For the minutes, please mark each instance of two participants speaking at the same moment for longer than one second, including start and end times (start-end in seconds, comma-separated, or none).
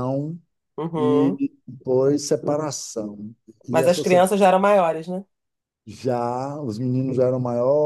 none